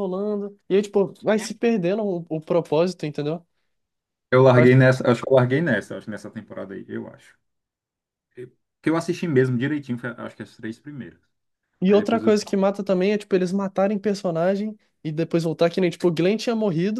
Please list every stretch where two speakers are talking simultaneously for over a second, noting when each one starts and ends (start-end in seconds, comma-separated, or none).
none